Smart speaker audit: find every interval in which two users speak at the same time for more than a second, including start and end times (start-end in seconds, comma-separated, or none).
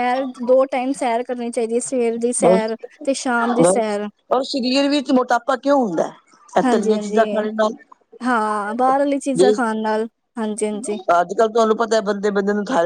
none